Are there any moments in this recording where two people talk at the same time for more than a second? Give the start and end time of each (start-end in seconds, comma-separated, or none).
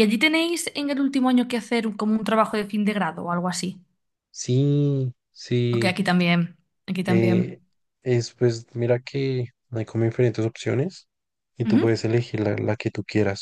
none